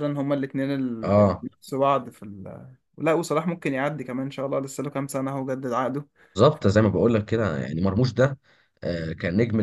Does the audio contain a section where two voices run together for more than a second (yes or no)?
no